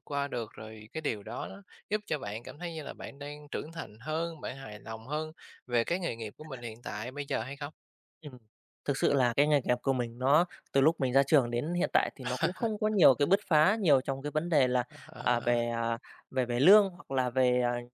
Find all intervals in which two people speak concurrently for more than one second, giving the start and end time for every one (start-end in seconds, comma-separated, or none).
none